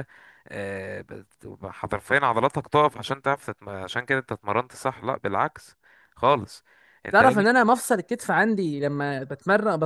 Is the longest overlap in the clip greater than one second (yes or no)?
no